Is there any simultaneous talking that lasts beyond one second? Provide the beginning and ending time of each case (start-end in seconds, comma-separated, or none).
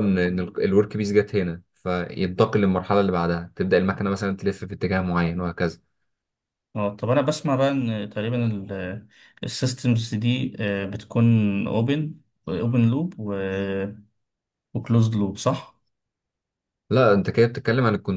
none